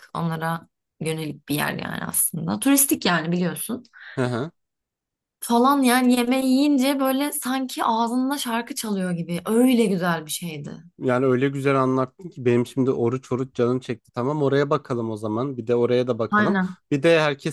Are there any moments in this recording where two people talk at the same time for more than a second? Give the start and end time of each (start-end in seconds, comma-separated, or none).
none